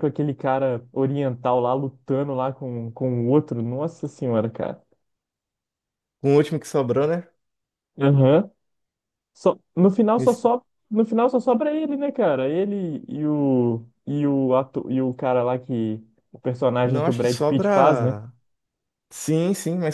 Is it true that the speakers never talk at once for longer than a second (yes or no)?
no